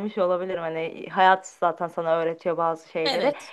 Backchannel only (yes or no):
yes